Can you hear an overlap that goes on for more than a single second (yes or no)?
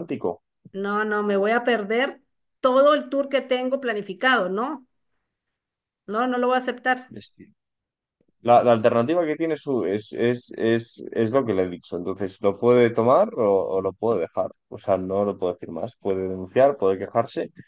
no